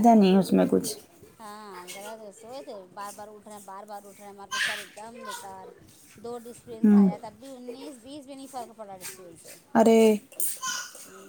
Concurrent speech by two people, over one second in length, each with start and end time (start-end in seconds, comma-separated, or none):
none